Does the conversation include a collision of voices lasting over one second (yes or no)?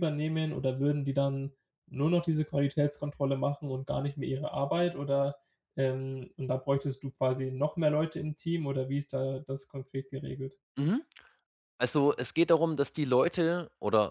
no